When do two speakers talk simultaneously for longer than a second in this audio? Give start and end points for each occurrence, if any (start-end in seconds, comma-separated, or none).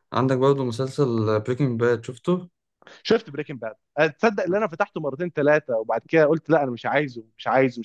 none